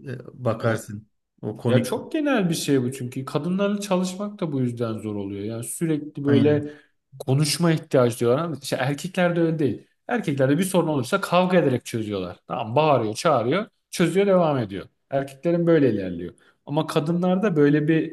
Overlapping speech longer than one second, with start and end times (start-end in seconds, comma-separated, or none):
none